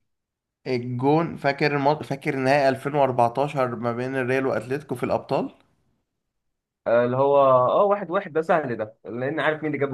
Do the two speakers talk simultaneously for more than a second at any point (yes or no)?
no